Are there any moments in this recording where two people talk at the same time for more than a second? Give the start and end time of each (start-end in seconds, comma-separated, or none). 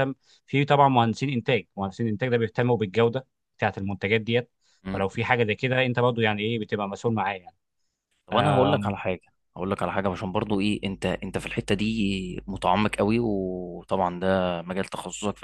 none